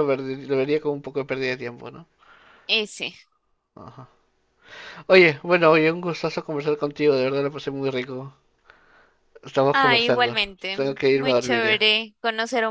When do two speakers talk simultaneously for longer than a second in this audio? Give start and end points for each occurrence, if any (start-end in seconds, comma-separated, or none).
9.7-11.8